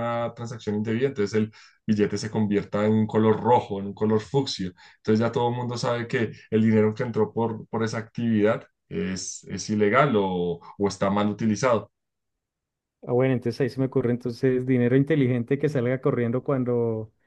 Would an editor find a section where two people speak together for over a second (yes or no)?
no